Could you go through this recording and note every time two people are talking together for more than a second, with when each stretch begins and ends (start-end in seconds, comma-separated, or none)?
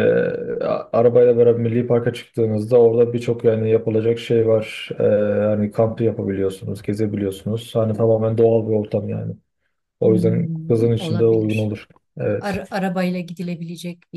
10.0-11.8